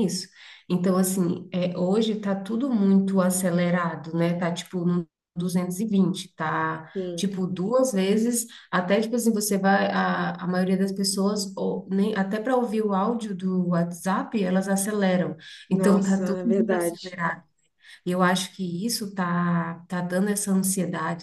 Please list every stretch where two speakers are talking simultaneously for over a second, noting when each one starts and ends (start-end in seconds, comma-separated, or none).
15.7-17.0